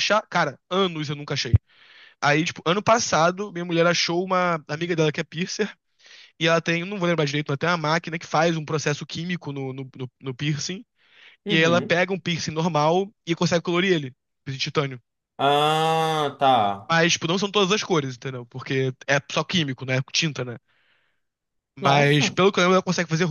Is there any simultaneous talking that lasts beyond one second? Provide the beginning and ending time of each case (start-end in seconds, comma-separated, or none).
none